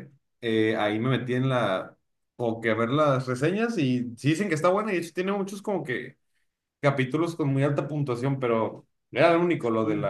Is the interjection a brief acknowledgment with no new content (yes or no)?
yes